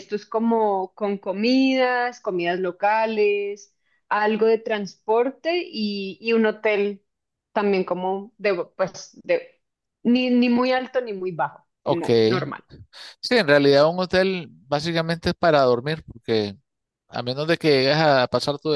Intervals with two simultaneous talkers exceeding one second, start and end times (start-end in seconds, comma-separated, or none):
none